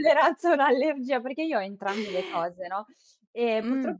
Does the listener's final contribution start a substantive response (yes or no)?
no